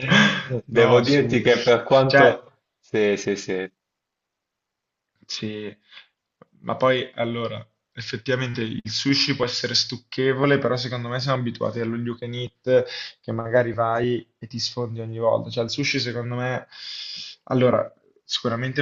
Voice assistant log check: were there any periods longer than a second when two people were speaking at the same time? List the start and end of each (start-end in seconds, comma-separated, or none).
0.7-2.4